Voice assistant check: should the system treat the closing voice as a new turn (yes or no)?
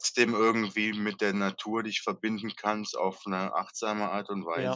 yes